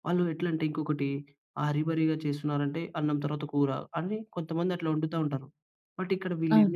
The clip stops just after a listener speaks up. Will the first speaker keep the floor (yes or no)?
yes